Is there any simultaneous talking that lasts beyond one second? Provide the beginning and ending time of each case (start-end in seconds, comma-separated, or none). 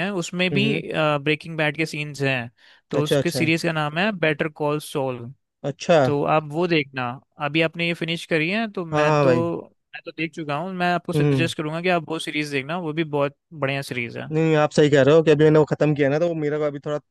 none